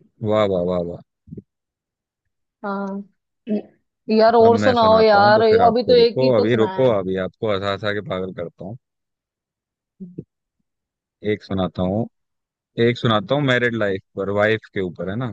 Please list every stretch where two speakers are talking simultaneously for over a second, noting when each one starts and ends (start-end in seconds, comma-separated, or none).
4.5-7.0